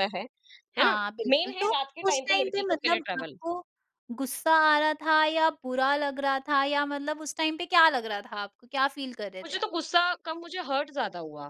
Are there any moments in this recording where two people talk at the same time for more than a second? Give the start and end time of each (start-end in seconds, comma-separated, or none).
0.8-3.4